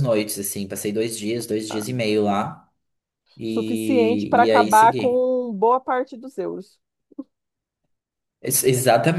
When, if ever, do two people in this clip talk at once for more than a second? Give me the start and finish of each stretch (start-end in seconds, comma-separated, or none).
3.5-5.3